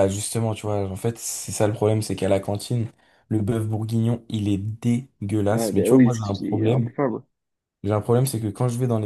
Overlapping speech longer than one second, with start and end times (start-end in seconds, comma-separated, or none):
5.5-6.9